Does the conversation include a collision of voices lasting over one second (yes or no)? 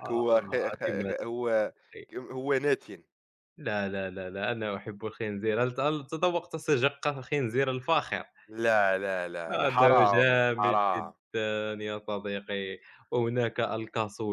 yes